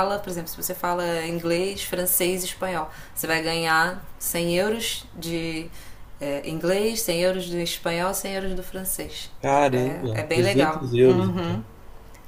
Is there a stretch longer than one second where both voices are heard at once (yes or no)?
yes